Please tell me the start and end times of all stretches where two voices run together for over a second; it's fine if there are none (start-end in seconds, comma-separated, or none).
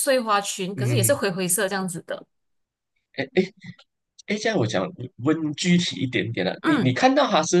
none